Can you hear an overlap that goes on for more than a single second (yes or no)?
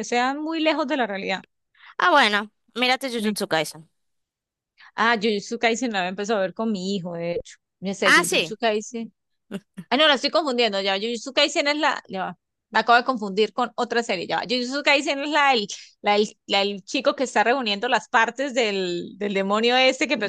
no